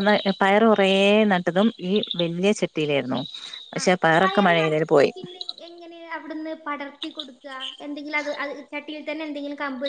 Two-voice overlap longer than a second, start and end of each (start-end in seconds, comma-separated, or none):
none